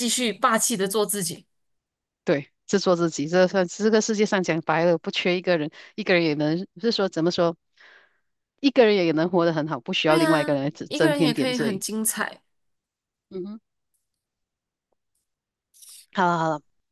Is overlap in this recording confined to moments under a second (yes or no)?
no